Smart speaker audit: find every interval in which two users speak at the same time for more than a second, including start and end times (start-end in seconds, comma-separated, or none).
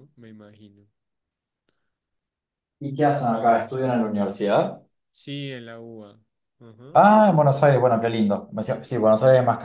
none